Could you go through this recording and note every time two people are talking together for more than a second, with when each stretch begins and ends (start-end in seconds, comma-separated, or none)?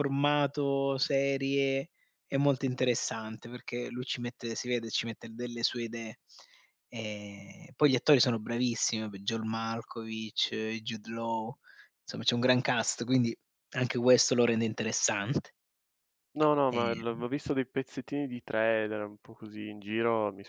none